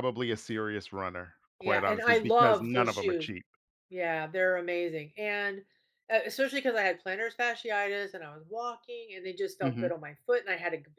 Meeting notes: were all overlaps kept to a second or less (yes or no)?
no